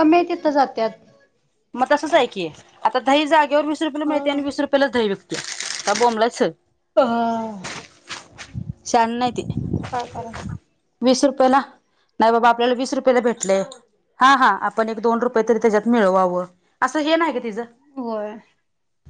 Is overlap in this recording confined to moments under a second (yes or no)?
yes